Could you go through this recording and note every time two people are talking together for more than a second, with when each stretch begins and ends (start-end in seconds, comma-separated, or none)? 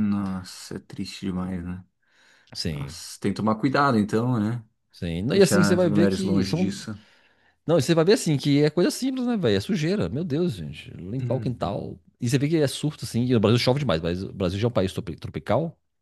5.3-6.8